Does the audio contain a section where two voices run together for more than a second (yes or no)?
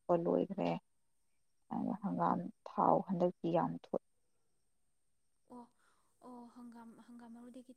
no